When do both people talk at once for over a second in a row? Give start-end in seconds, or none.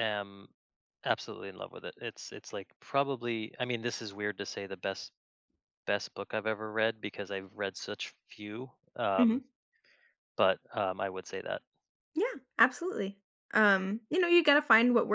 none